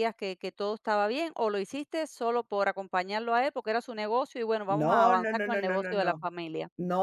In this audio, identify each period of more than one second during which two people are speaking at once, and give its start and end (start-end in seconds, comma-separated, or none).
4.7-6.3